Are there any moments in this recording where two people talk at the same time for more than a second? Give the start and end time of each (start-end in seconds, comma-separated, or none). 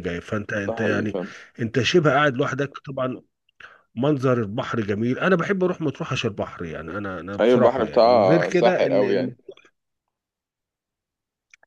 7.4-9.3